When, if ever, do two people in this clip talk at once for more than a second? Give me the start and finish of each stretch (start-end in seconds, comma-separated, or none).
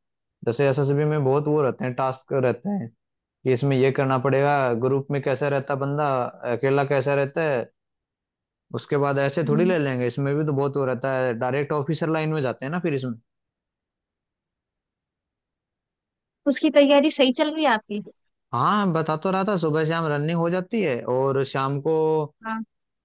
none